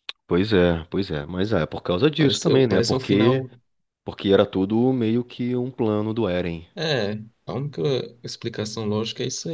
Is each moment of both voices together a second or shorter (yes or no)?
no